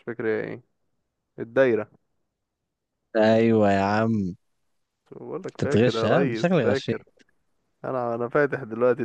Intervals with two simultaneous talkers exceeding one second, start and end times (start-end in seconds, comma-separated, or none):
5.5-7.0